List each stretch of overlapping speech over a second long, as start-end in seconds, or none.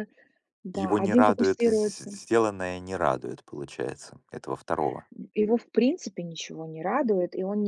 0.7-2.2